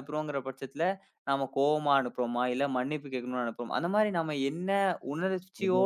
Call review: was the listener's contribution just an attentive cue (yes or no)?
yes